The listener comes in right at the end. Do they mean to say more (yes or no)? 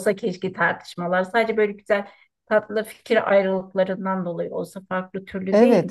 yes